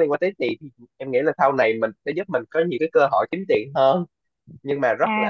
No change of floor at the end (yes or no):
no